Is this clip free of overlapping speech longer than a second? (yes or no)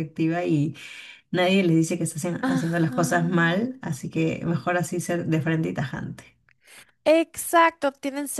no